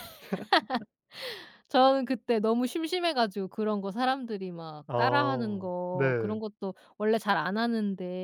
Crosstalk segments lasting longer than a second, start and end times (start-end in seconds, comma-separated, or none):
4.9-6.4